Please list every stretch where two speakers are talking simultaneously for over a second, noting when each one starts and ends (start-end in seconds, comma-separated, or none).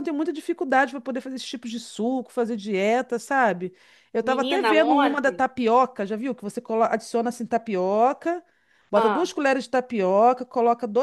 4.2-5.5